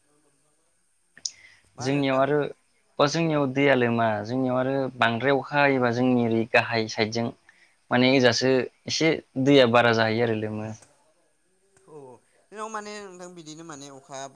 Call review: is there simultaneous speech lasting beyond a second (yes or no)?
no